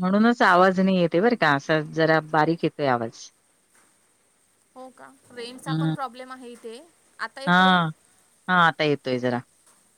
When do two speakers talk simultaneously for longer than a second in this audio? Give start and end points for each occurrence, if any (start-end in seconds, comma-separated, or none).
none